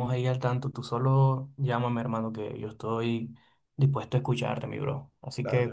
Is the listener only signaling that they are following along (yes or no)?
yes